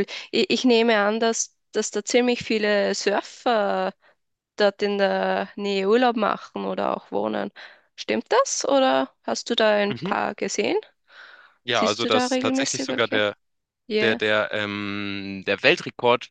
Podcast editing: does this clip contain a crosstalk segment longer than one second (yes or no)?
yes